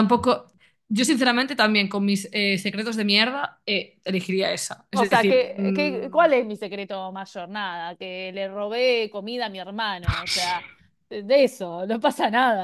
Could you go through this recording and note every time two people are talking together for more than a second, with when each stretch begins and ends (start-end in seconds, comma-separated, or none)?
4.9-6.3